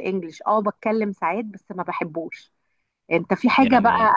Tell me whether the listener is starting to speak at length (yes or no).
no